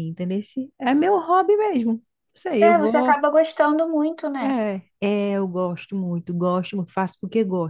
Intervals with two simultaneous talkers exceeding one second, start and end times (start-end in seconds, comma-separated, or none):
none